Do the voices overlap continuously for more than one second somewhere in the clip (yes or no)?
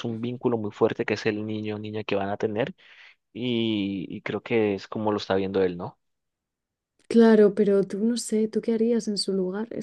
no